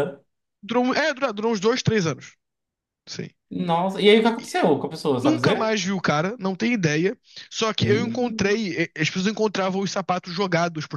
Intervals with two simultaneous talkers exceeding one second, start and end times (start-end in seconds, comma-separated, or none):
none